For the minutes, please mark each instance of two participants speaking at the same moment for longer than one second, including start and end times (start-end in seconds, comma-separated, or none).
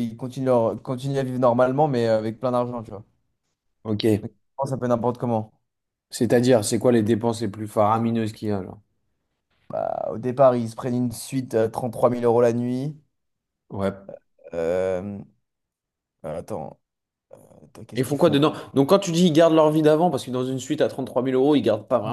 none